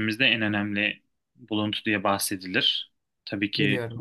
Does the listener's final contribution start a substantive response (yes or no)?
no